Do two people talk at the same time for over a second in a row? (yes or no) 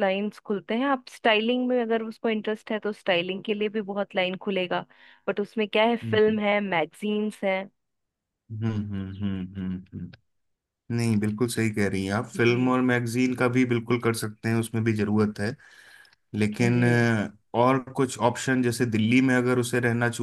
no